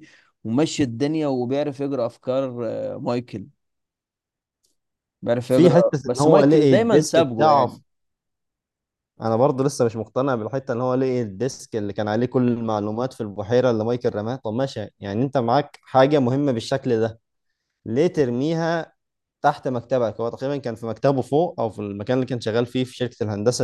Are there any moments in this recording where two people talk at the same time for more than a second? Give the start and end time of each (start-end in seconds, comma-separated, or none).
5.5-7.8